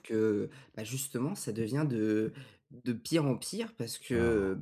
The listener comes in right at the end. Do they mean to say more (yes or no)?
no